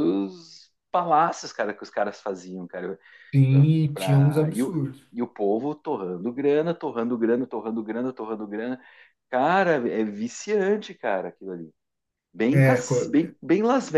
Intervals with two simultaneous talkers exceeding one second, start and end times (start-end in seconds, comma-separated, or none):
3.5-5.1